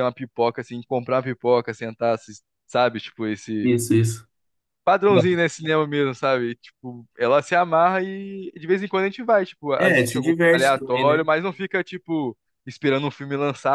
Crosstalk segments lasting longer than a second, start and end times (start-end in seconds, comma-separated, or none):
9.8-11.3